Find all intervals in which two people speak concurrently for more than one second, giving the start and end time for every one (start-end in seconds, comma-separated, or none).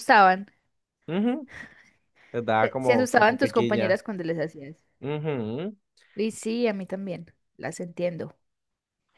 2.6-4.0